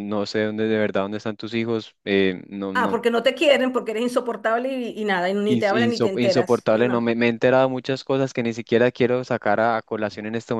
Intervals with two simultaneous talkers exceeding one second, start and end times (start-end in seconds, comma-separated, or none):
5.5-7.1